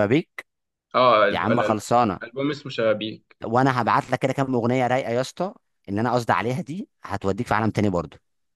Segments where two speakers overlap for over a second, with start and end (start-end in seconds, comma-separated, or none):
none